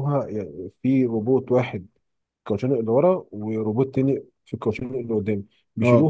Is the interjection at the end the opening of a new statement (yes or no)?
no